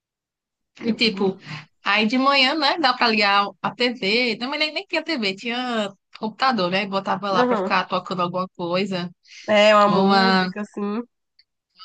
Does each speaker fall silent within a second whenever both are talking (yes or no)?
yes